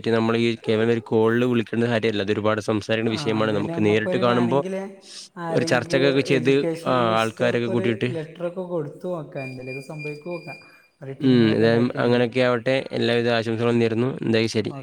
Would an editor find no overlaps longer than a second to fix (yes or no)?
no